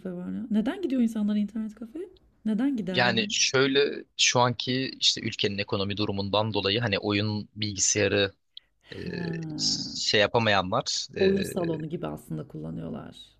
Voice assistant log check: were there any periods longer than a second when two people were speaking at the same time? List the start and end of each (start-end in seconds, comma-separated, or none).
none